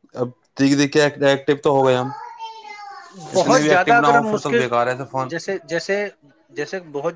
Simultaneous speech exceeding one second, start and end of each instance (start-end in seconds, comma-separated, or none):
3.3-4.6